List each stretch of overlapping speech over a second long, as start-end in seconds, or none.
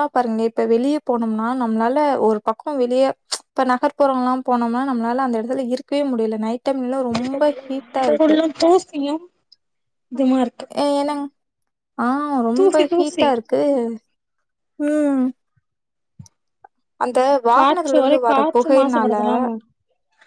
17.6-19.1